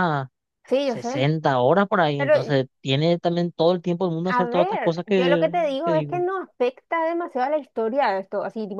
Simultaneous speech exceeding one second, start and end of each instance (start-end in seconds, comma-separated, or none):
4.3-6.2